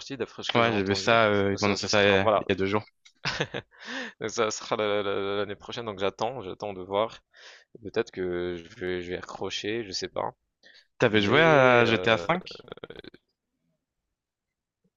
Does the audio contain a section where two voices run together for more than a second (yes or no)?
yes